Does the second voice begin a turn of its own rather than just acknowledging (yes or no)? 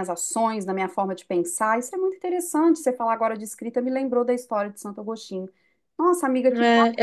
yes